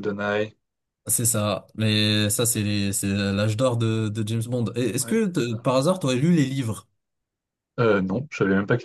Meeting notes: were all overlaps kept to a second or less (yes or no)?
yes